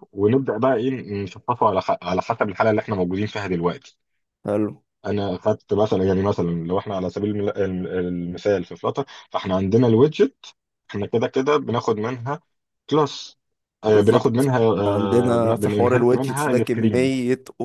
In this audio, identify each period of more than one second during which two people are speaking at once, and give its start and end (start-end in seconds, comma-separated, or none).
13.8-17.1